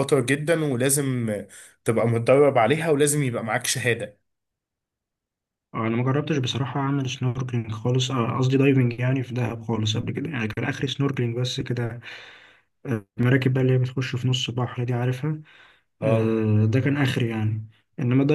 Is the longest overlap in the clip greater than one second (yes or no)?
no